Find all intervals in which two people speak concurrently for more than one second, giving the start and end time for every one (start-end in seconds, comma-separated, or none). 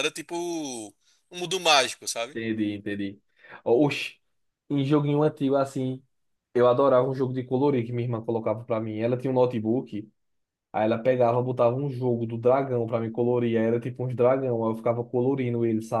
none